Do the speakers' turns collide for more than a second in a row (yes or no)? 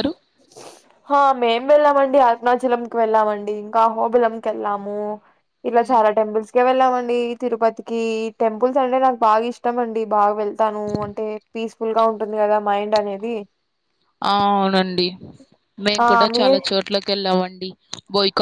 no